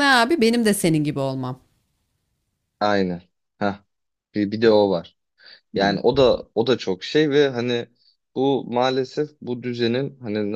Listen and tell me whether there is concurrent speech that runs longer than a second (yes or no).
no